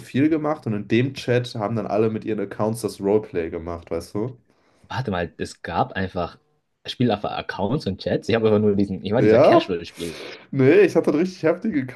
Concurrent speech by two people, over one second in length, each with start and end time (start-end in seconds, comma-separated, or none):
none